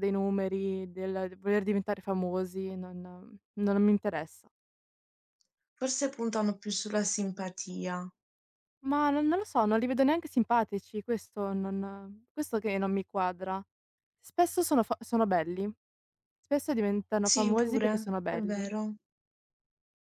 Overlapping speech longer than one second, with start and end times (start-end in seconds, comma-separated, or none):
17.2-18.7